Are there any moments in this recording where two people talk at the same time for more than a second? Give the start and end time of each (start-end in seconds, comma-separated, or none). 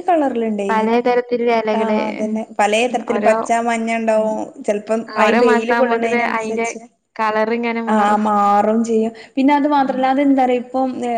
5.2-6.7